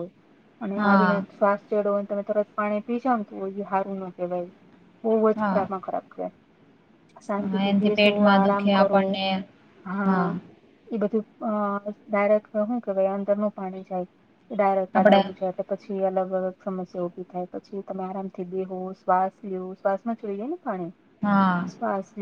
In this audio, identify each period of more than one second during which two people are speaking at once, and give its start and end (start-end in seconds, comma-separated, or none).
7.5-9.0